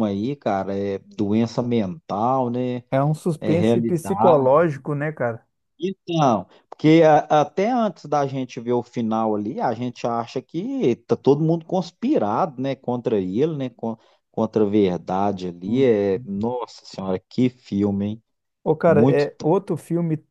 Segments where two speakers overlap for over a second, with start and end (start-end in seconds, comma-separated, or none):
3.4-4.7